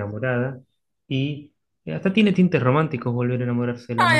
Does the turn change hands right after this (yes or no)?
yes